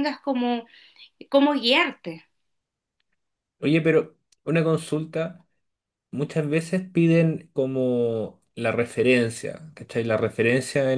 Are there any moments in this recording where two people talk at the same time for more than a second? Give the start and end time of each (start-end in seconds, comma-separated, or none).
none